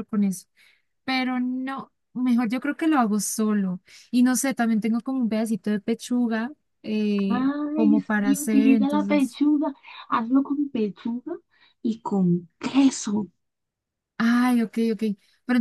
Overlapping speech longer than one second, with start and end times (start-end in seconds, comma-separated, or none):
7.3-9.4